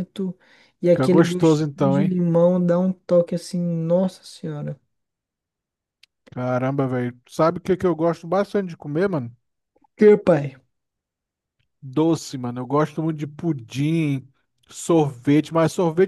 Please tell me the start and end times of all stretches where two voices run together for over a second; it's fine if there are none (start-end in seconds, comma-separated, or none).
0.9-2.2